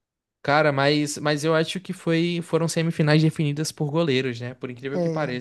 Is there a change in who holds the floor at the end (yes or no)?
yes